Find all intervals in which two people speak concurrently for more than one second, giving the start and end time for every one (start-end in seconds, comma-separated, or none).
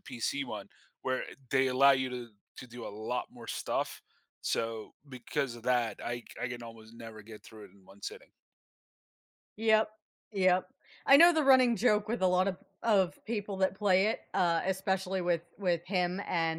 none